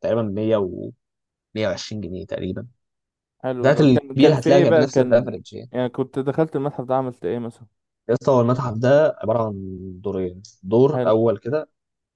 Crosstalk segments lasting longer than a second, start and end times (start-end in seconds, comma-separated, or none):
3.6-5.7